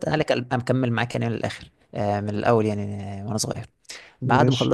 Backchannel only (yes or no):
yes